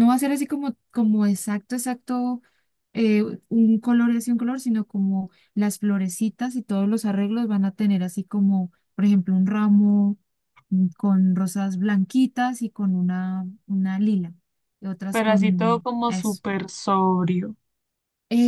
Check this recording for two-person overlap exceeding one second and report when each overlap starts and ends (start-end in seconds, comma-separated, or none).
15.1-16.4